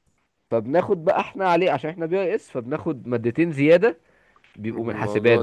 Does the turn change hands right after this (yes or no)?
yes